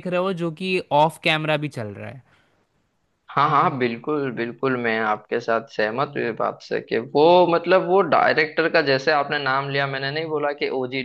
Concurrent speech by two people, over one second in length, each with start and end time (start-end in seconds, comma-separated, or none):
none